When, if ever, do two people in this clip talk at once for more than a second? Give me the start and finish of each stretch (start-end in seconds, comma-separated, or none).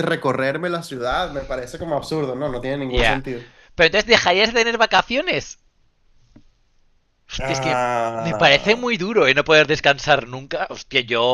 7.4-8.8